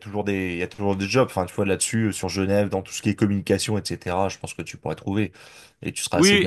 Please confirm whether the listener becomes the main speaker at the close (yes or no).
yes